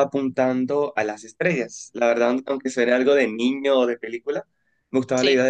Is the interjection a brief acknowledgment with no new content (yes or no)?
yes